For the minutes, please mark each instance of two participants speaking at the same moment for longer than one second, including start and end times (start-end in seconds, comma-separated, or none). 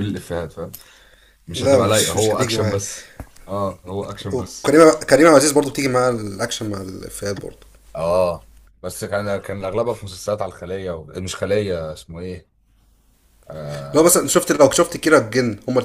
1.5-2.8